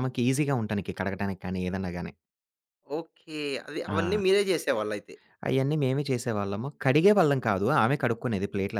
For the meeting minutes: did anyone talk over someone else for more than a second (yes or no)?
no